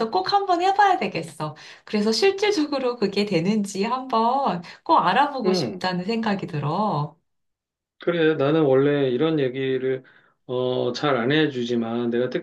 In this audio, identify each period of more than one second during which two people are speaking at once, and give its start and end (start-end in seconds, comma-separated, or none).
none